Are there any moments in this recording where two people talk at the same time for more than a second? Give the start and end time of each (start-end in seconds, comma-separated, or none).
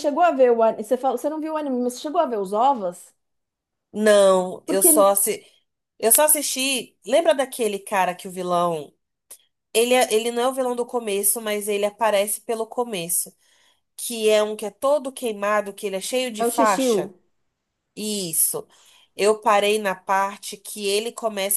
none